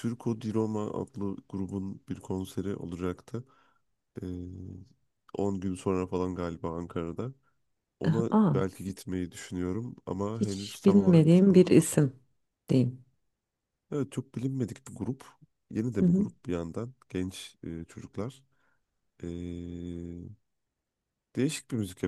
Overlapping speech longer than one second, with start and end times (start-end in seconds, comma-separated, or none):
10.4-12.0